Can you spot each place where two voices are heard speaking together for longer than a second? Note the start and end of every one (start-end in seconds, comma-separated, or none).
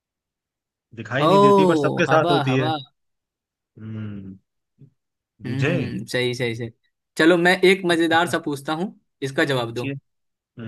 1.2-2.7